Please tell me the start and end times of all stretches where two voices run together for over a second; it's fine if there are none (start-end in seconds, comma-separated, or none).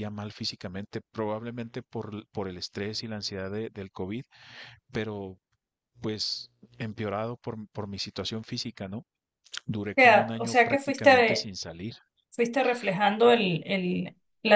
9.9-11.5